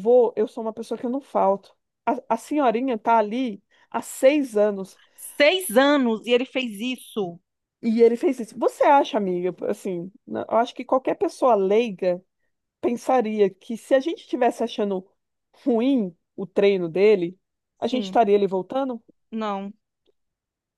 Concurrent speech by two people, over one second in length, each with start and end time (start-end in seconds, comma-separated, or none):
none